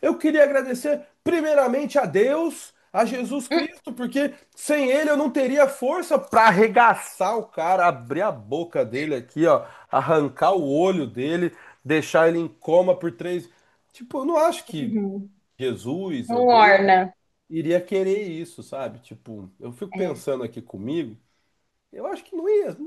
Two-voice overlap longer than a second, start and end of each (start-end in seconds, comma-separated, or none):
none